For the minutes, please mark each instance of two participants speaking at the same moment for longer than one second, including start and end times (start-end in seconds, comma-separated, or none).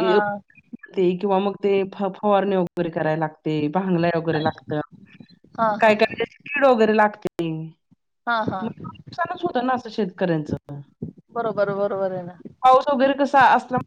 none